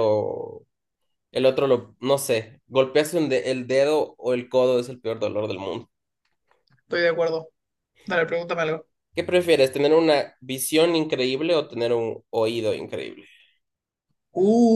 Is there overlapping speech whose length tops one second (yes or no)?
no